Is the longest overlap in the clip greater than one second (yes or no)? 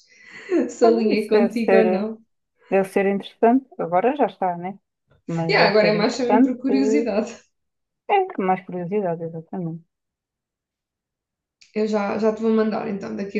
yes